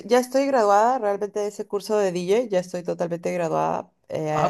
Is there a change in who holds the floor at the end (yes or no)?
no